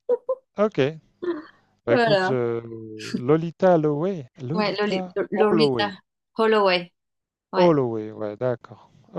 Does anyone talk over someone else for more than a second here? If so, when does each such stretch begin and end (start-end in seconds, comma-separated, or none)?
4.5-5.9